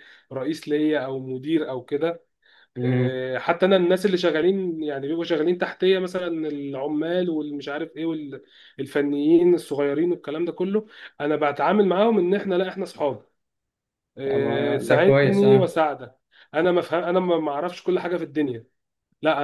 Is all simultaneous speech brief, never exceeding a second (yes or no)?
no